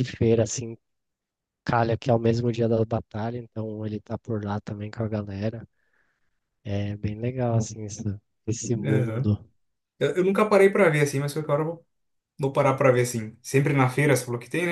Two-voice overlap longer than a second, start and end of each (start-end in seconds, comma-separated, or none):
none